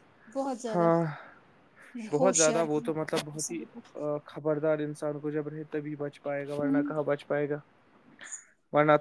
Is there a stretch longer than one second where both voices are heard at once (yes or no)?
yes